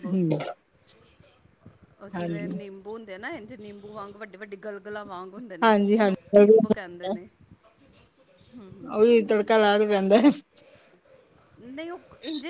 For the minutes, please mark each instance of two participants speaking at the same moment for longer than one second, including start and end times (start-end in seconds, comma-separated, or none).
5.6-7.2